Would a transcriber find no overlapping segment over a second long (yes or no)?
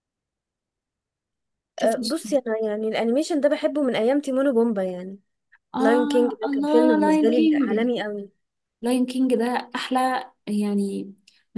no